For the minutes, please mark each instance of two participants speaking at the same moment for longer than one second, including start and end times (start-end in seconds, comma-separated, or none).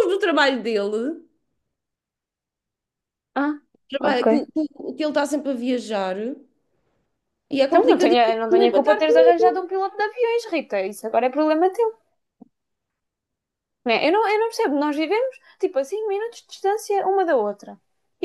7.7-9.6